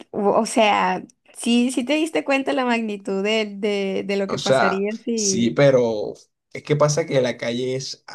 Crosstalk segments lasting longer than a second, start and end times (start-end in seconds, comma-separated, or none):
4.3-5.6